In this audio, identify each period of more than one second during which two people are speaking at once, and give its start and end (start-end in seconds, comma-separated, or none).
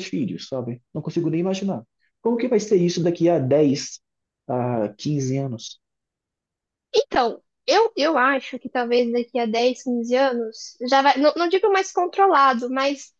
none